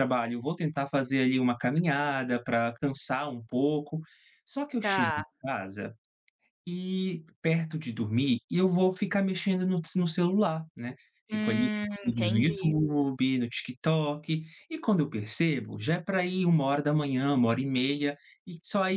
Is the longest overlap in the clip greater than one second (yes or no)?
yes